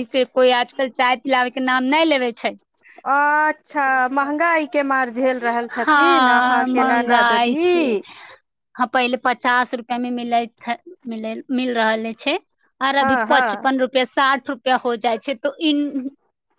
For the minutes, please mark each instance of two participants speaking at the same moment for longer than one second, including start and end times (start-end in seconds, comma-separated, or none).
5.7-7.7